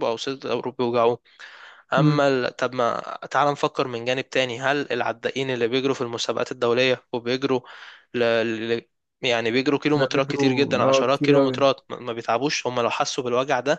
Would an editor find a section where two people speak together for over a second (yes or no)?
yes